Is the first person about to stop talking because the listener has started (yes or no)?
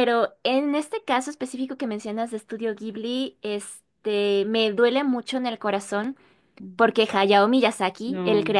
no